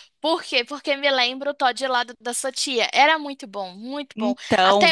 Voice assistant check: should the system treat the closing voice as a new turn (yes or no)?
no